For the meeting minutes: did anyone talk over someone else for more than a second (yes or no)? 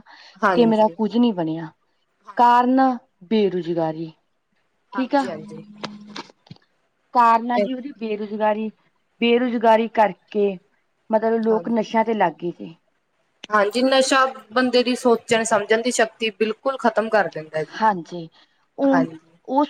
no